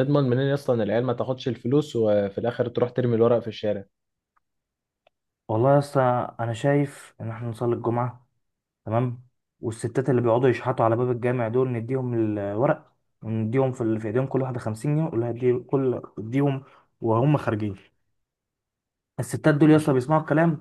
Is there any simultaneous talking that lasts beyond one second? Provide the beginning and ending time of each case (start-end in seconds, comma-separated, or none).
none